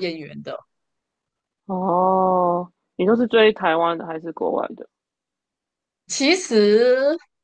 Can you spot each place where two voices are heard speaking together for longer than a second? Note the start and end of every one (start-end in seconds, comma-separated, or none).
none